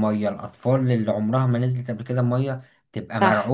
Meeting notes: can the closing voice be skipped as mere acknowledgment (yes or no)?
yes